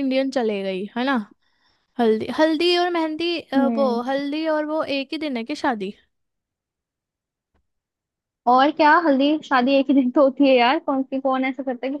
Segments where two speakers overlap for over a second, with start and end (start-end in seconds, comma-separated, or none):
none